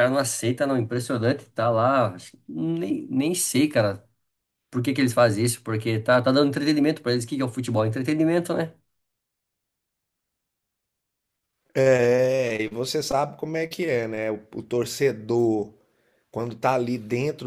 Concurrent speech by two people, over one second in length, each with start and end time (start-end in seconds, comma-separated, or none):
none